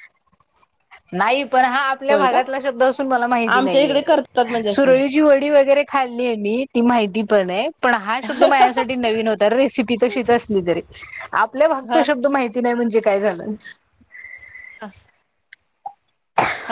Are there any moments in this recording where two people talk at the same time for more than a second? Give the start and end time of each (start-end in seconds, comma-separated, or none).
none